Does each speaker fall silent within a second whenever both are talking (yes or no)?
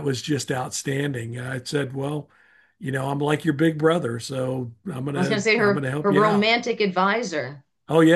no